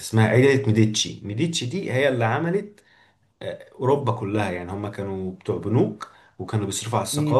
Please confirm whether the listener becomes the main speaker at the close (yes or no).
no